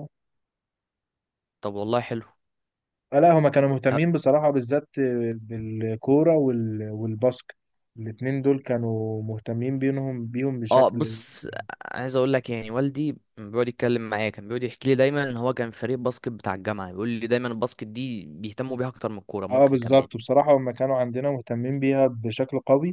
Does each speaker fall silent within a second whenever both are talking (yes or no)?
yes